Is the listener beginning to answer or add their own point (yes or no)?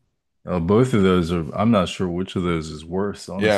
yes